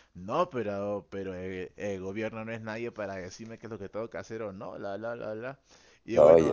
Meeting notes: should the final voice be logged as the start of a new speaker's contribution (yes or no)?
no